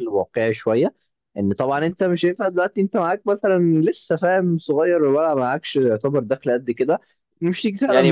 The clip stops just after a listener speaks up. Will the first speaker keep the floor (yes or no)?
no